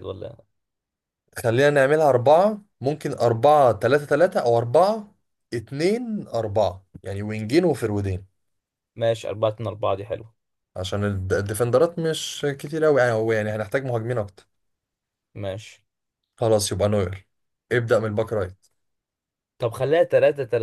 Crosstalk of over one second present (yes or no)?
no